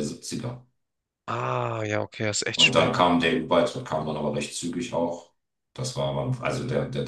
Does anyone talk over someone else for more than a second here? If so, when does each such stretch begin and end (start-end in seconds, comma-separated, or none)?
none